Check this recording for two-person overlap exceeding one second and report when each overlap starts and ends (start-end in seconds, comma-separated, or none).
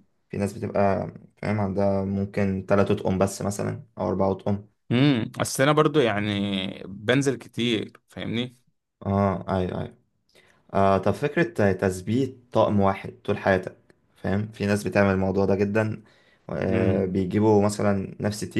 none